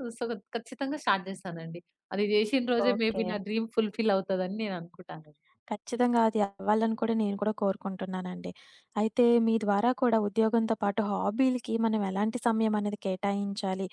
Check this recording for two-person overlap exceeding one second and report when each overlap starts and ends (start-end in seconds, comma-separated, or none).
none